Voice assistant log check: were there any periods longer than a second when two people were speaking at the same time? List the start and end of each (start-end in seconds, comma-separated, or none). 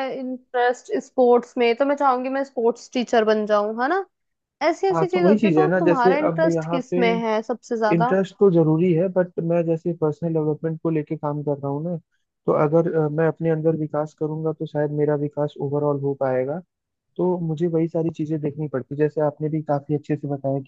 4.9-7.0